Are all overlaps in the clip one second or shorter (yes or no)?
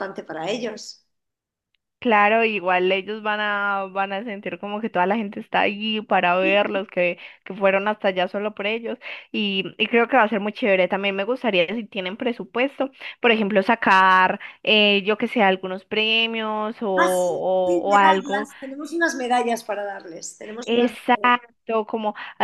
no